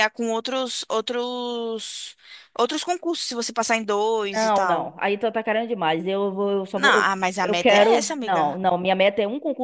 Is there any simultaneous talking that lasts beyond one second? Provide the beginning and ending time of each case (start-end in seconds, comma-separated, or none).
6.7-8.6